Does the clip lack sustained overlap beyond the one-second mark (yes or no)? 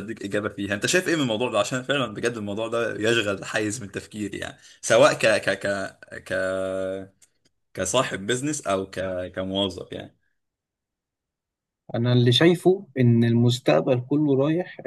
yes